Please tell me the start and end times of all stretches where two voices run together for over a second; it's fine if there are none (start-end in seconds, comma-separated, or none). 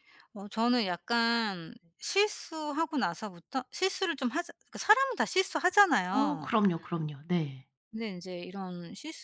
none